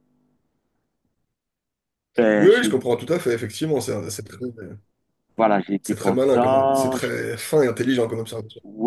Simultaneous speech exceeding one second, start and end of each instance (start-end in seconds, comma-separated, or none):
5.8-7.1